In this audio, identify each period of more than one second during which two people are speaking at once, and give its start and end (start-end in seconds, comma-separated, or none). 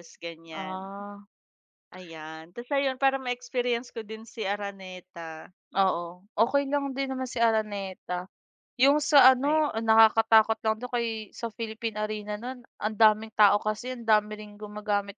none